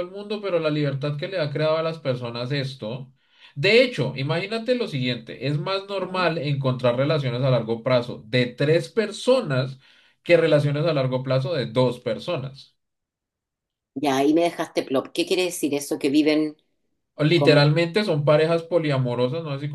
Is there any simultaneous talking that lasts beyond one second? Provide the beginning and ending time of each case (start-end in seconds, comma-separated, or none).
none